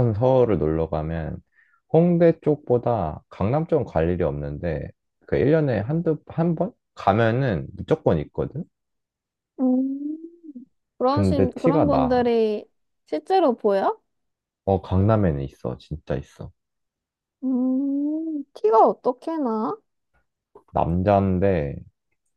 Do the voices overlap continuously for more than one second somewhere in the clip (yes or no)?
yes